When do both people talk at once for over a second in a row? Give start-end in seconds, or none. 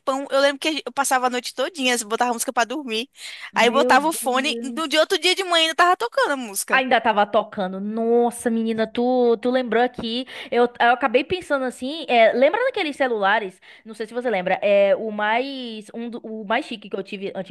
3.5-5.0